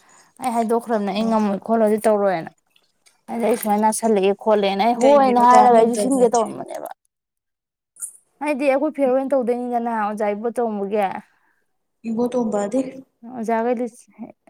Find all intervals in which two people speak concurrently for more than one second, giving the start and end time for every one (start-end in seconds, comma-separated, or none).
5.0-6.4